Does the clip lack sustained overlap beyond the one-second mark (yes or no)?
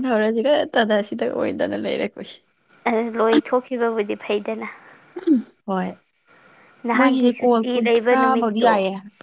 no